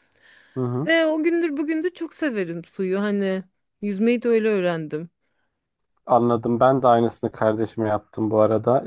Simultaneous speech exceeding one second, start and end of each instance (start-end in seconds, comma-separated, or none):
none